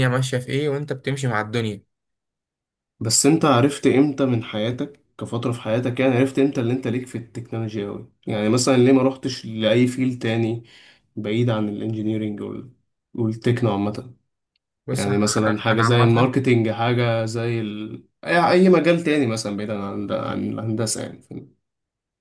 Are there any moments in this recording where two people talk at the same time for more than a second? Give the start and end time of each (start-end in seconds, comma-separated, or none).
14.9-16.3